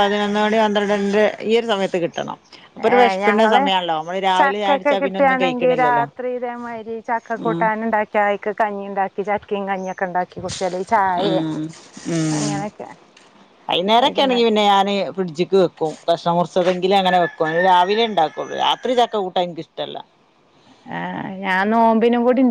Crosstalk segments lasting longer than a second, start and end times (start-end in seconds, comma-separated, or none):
4.4-6.1